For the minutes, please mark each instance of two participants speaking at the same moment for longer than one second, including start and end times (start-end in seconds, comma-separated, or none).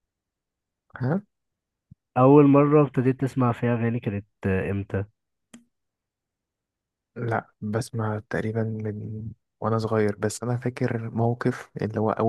none